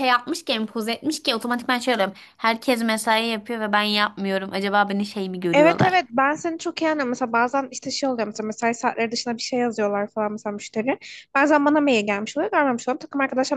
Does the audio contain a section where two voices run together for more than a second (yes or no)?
no